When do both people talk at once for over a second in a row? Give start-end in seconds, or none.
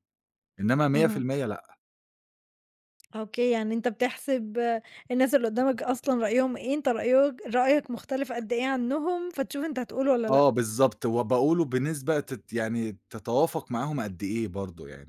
none